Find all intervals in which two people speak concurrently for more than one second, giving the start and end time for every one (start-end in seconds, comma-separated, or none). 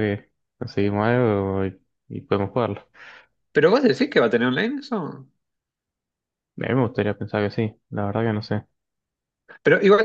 none